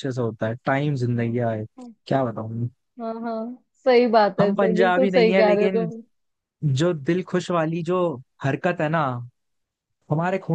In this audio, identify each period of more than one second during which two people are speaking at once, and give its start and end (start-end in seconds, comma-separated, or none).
4.4-5.9